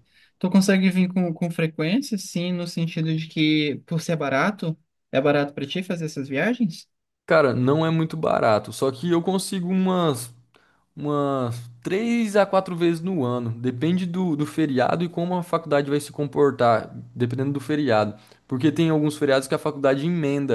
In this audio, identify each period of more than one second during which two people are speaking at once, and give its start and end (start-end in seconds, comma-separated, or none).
none